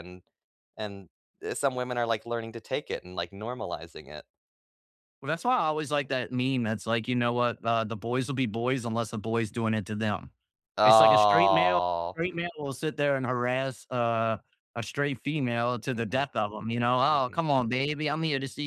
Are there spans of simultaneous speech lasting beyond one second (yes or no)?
yes